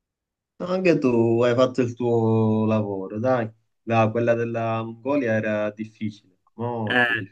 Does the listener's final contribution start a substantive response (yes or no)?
yes